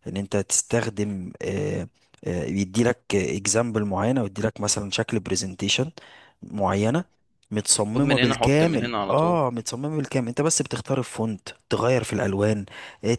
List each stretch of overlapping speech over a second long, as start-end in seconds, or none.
7.8-9.4